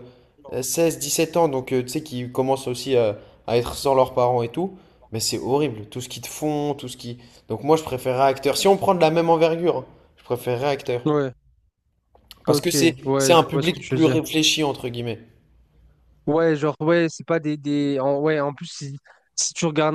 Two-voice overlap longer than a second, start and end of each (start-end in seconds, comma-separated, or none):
12.5-14.2